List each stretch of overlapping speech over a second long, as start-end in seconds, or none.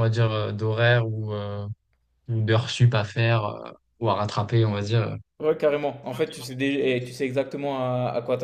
none